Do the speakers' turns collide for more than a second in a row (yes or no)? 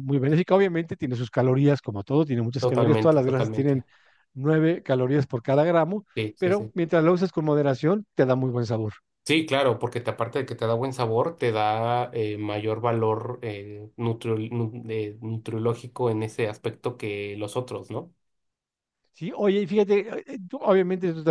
yes